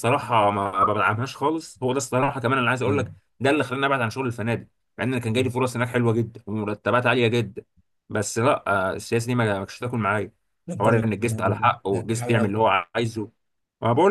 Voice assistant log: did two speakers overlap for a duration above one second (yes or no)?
yes